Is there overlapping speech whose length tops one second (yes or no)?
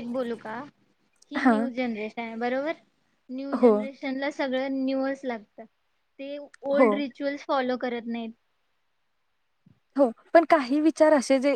no